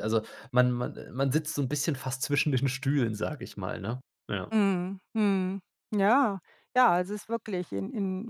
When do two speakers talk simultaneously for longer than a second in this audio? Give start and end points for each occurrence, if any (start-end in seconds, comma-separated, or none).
none